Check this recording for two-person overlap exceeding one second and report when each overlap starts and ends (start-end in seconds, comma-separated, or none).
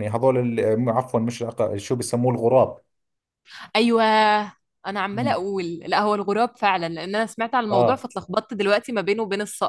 none